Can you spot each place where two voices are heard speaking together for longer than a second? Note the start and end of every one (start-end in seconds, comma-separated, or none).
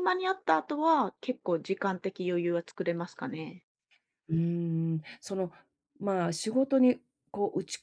none